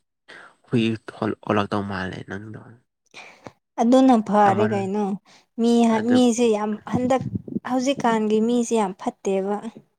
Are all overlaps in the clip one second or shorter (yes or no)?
yes